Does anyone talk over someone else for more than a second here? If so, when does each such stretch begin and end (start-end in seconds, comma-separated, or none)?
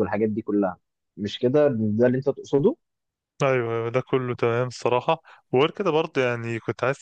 none